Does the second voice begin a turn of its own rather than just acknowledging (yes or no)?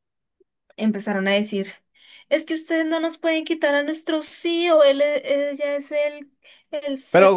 yes